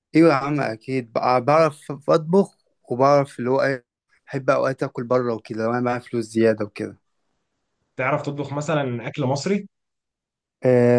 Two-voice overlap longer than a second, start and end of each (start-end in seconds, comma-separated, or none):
none